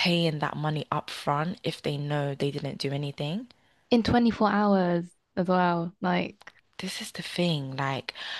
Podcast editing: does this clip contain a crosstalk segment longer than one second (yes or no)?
no